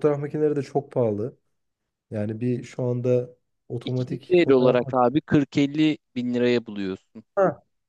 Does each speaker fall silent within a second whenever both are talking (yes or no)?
no